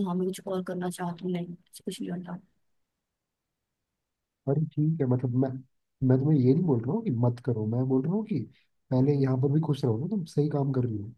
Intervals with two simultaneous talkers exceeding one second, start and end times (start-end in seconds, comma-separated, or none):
none